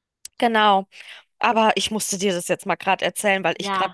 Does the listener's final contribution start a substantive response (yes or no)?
no